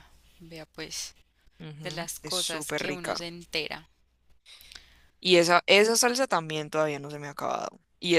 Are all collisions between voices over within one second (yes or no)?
no